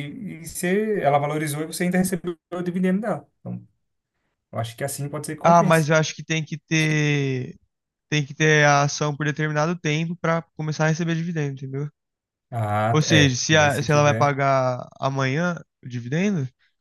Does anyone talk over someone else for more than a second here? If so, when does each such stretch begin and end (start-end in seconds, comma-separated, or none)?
12.9-14.4